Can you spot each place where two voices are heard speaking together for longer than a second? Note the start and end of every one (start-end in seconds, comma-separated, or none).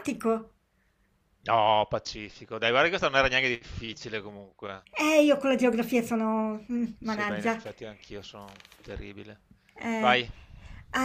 none